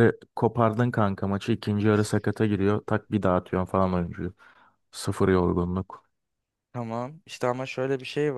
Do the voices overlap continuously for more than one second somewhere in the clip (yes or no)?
no